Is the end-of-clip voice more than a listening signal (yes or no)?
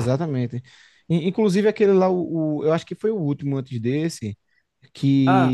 no